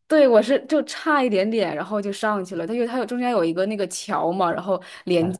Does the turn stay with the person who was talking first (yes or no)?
yes